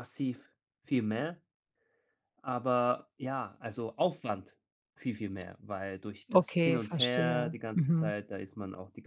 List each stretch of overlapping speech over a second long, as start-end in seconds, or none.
6.3-8.1